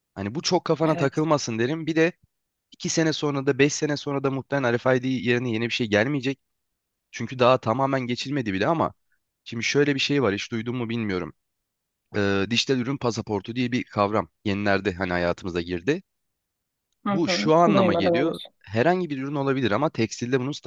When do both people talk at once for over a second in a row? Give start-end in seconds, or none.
17.1-18.5